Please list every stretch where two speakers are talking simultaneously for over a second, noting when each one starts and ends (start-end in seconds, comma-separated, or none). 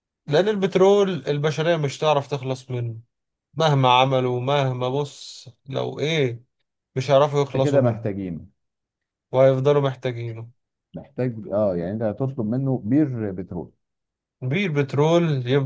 none